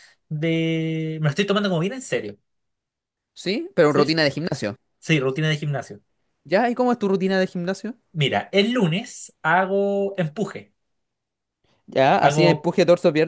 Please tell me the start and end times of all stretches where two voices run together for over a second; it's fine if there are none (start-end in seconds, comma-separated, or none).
none